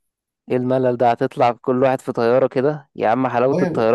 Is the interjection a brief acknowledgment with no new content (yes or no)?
yes